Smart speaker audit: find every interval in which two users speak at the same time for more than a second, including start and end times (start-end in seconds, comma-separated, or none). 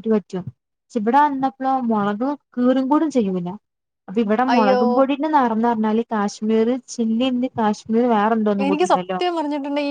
none